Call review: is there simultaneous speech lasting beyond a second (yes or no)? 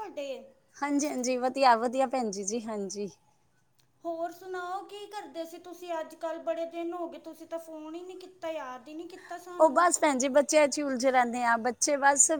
no